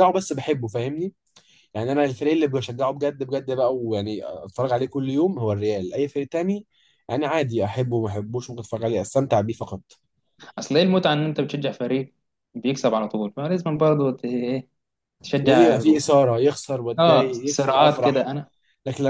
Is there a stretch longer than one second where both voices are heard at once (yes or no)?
yes